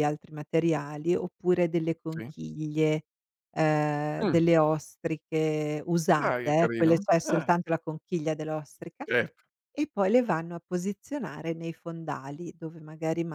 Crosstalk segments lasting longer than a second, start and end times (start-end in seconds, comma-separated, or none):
6.2-7.5